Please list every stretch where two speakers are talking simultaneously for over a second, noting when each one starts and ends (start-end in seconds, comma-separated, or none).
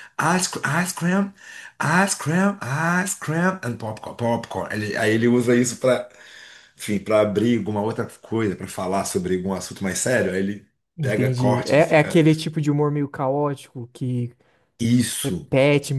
11.0-12.2